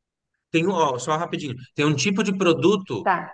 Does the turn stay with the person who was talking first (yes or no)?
yes